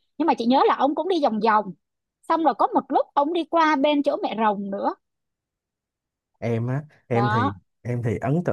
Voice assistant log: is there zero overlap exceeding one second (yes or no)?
yes